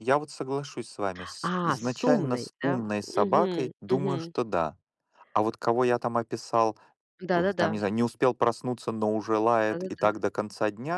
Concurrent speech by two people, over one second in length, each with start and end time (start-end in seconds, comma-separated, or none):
1.4-4.3